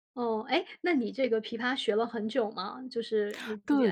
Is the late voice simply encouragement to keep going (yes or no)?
no